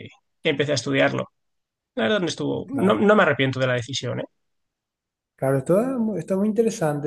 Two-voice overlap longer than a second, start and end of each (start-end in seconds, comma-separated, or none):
none